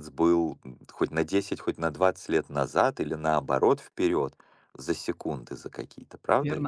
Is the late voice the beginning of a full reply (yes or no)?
yes